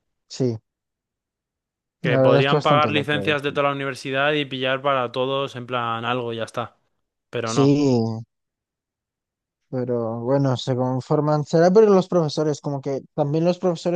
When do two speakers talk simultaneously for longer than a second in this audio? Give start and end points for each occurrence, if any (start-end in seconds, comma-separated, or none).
2.0-3.3